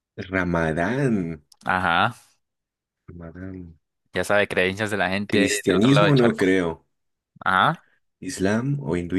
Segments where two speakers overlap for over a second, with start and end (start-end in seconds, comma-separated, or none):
5.3-6.5